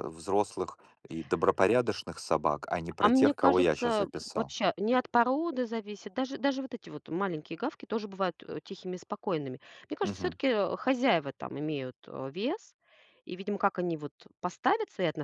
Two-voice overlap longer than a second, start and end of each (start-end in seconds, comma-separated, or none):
3.0-4.5